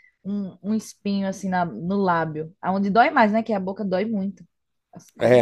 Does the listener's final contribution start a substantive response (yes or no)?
yes